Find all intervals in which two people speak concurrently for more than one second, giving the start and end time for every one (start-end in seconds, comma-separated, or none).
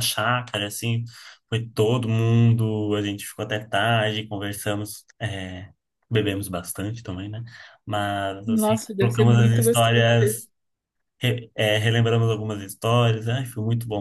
8.5-10.5